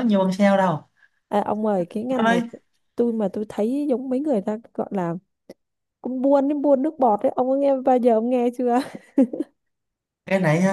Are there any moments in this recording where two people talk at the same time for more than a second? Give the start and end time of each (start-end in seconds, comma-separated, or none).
none